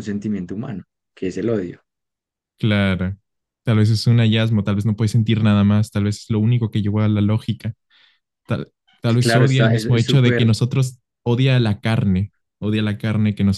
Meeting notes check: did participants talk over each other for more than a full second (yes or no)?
yes